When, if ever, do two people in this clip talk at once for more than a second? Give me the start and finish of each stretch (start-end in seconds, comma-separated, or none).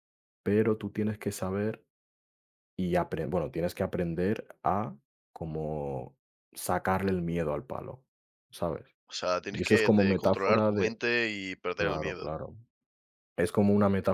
9.5-11.0